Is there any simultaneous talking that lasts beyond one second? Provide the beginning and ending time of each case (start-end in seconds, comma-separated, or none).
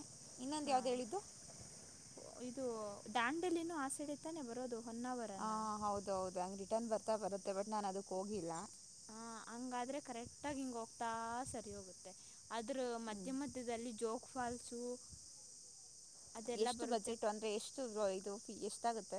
none